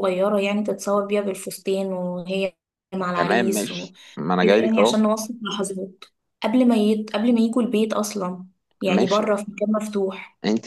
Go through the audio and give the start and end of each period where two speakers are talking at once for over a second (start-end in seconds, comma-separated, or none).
3.1-5.1